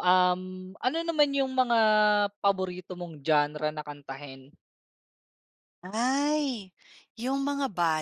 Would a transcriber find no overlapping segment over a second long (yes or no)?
yes